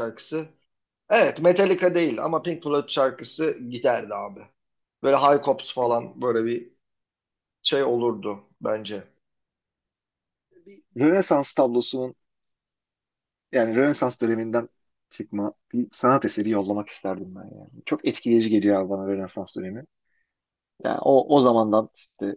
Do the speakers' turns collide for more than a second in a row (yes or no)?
no